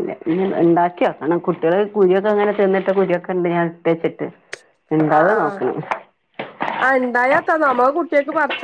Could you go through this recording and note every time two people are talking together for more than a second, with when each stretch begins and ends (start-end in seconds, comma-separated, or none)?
none